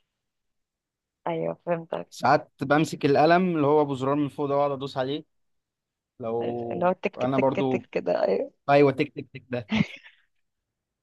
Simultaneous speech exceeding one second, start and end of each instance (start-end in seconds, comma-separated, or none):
6.4-7.9